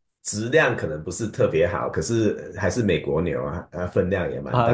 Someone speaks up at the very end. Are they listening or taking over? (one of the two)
taking over